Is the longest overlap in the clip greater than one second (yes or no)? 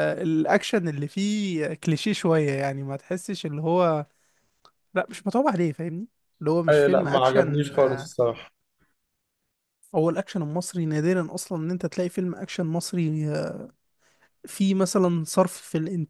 yes